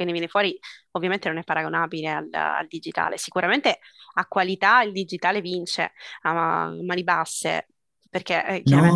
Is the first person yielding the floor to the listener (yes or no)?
yes